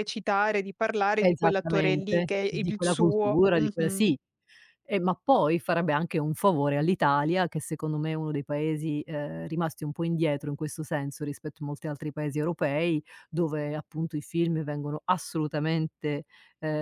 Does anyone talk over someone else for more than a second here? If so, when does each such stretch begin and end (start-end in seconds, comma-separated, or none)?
1.2-4.0